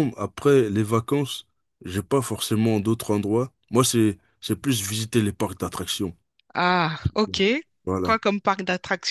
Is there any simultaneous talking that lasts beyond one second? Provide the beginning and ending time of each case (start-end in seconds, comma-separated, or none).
none